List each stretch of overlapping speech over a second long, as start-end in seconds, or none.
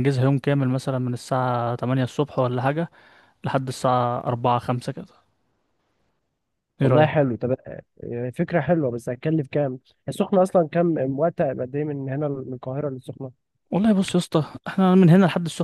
none